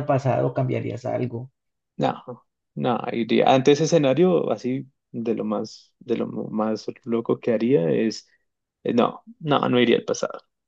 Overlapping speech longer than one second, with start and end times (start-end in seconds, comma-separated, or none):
none